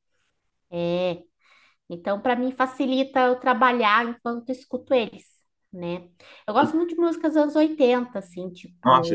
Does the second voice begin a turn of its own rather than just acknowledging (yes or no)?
yes